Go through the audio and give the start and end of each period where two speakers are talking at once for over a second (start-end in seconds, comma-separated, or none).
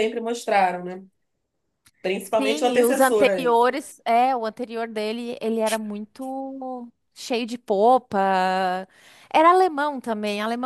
2.4-3.6